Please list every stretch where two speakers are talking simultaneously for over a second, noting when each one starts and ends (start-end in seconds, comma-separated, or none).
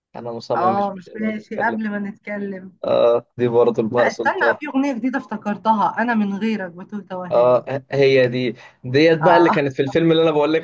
0.6-1.8